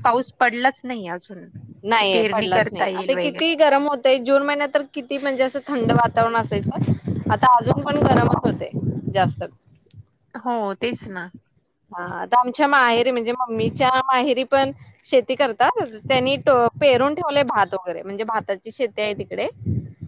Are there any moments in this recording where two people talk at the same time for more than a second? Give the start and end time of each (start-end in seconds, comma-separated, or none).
2.0-3.5